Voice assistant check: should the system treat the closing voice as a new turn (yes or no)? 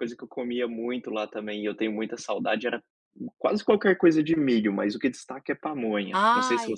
yes